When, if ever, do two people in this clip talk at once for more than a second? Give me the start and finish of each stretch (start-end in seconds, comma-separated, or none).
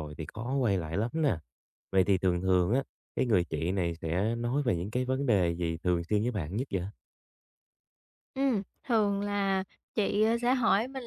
none